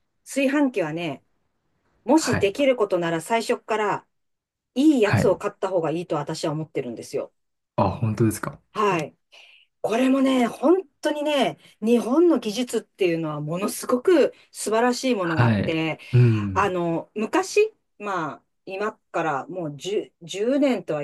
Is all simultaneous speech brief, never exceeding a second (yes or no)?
yes